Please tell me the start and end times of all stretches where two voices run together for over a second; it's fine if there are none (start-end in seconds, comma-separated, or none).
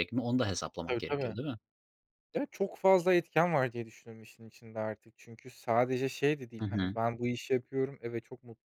none